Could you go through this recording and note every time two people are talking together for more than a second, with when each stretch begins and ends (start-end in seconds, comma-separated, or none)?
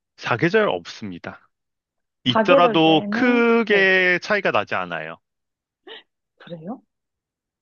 2.3-3.9